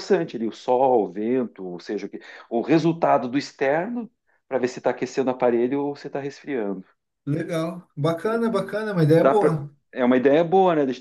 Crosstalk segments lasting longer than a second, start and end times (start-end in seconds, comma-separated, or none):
none